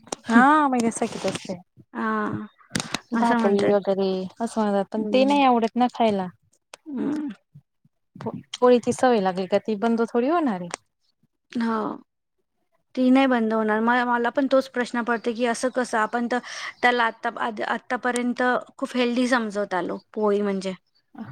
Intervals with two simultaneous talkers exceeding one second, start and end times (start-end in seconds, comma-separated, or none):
none